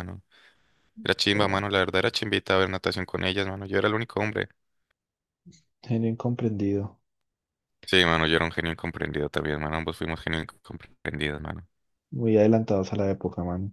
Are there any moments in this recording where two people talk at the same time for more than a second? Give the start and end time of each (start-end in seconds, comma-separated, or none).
none